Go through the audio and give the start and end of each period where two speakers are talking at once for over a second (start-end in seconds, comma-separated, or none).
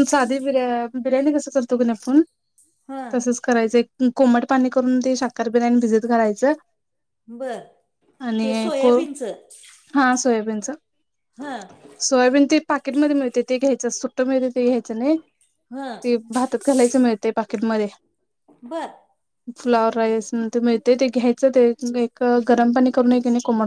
none